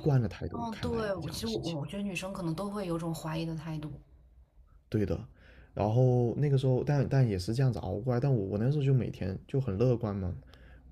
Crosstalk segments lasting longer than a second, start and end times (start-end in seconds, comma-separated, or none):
0.5-1.8